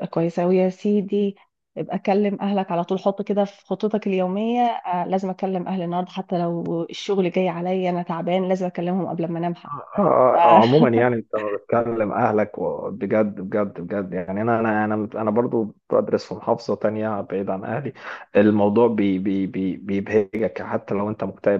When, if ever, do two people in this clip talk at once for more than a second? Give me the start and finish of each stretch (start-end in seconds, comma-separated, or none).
none